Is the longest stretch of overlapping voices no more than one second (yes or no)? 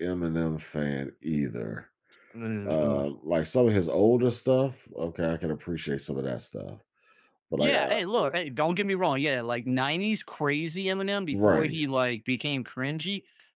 yes